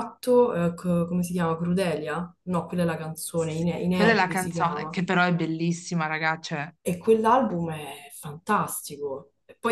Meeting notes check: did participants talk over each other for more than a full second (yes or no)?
yes